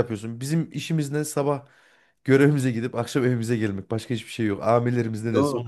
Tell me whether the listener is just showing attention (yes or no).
no